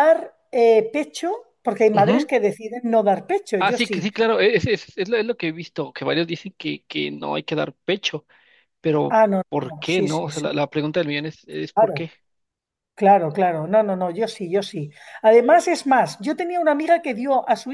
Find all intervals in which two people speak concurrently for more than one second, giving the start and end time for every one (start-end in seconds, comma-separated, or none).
9.1-10.5